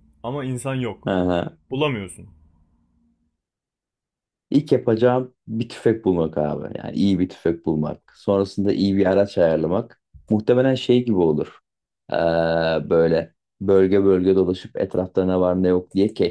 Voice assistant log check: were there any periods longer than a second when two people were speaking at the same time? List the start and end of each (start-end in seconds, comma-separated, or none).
none